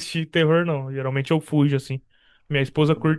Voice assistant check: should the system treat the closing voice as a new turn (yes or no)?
no